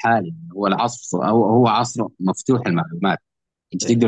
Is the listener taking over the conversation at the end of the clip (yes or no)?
no